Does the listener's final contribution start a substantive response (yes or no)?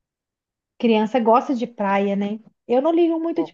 no